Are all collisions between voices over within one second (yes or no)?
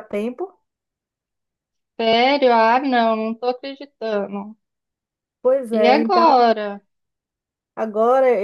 yes